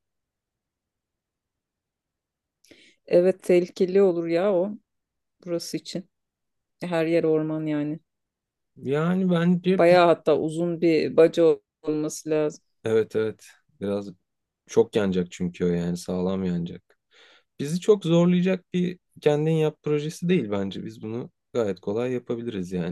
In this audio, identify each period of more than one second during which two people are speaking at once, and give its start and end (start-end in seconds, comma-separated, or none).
none